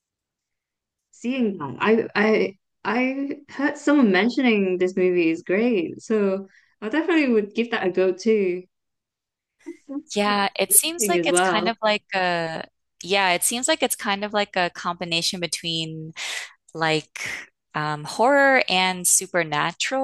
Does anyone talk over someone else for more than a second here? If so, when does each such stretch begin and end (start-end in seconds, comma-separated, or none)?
10.1-11.7